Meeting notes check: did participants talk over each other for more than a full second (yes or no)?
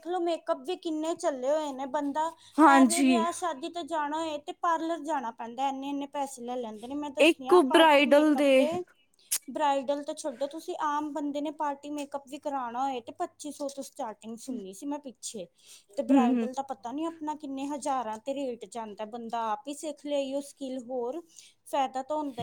yes